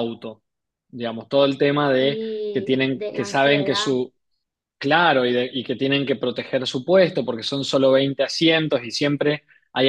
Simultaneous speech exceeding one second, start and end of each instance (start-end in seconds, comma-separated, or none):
2.0-3.9